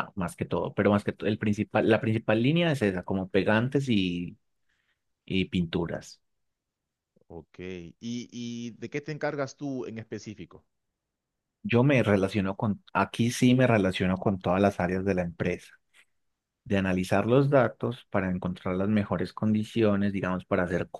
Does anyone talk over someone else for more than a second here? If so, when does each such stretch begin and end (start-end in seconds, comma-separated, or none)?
none